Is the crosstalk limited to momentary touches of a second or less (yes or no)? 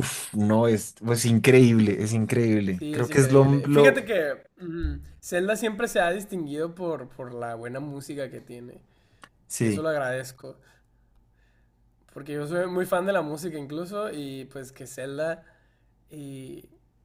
no